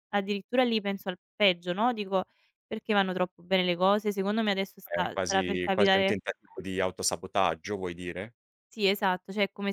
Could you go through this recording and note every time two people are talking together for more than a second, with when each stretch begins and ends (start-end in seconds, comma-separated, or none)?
4.8-6.2